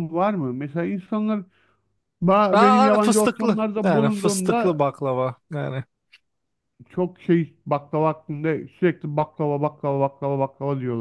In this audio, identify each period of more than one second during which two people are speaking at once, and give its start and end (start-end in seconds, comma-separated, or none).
2.5-4.8